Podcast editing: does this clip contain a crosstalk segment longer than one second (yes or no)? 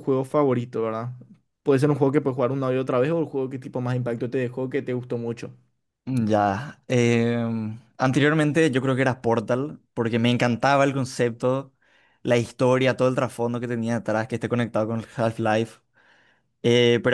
no